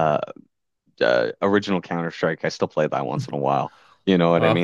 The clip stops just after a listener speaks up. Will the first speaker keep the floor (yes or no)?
yes